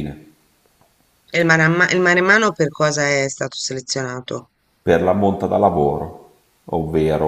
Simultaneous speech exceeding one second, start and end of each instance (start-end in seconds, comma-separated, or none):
none